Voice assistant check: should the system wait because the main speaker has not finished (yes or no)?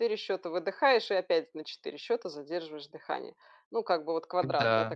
yes